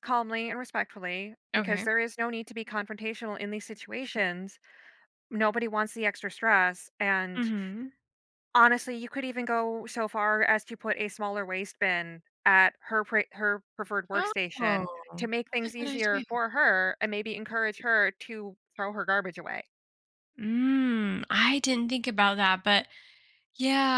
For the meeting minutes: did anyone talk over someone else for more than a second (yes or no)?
yes